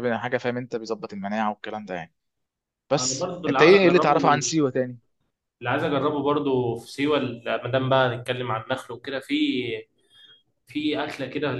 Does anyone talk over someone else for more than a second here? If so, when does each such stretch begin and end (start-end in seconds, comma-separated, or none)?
3.0-4.5